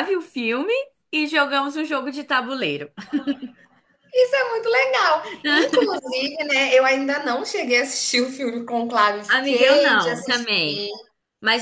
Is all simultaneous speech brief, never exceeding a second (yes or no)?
no